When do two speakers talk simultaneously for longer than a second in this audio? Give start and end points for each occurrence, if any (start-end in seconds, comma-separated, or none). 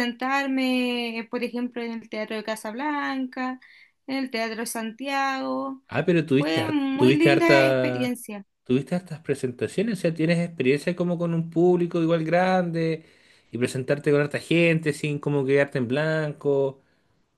6.4-8.1